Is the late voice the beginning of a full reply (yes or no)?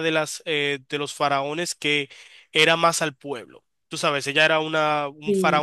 no